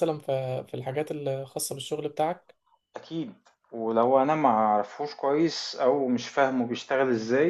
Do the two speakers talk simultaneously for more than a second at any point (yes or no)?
no